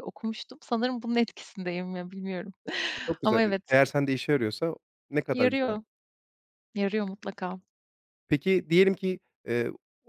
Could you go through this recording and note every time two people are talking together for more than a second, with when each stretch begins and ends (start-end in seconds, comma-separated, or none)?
none